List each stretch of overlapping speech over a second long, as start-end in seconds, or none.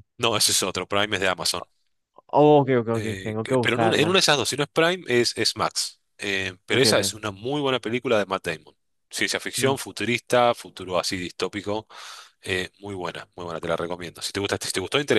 2.9-4.2